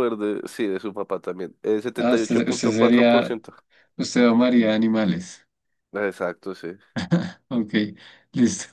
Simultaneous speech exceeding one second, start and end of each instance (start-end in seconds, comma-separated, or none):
2.0-3.4